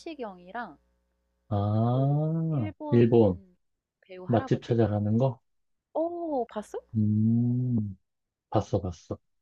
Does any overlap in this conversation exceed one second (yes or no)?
yes